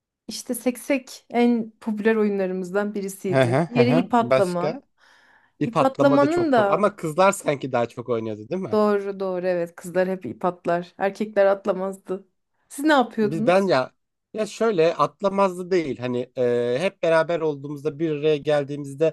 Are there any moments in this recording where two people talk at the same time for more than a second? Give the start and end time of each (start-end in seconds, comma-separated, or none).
3.3-4.8, 5.6-6.9